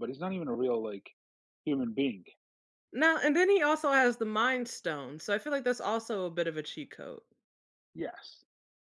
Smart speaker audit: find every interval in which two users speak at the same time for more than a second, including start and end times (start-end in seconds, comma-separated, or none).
none